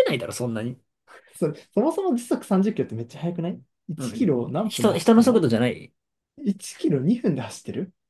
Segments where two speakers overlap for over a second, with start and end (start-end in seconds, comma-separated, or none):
4.0-5.5